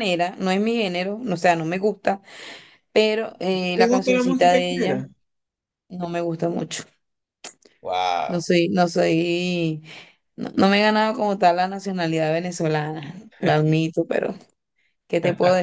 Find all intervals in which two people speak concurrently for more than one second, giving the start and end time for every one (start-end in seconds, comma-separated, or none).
3.8-5.0